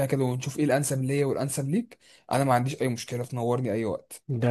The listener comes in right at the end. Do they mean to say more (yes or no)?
yes